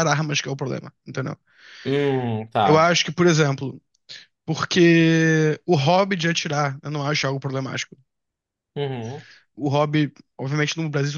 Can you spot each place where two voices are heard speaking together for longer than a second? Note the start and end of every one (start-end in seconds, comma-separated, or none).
none